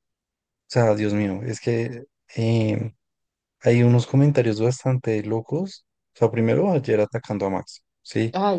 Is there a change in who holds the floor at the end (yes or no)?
yes